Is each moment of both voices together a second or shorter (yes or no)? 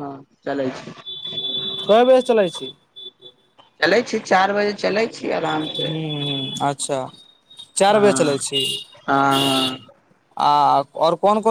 yes